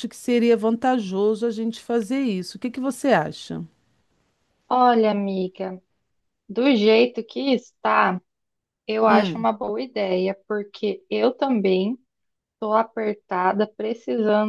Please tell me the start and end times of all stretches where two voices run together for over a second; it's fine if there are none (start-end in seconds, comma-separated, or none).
none